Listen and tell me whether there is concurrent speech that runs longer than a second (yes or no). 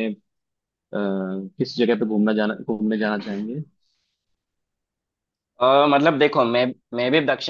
no